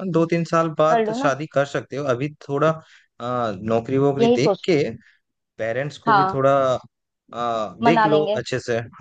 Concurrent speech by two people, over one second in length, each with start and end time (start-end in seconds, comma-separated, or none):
none